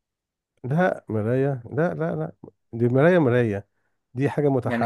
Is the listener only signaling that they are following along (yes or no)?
yes